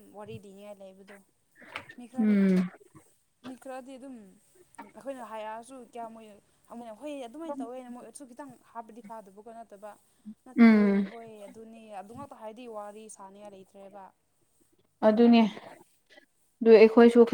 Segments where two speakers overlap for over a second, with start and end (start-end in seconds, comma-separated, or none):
none